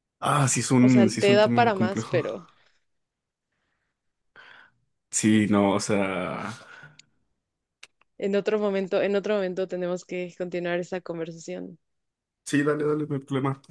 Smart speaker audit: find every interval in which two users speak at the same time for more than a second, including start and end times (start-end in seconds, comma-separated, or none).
0.8-2.2